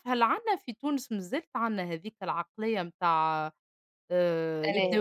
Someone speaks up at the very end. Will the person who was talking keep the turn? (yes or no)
yes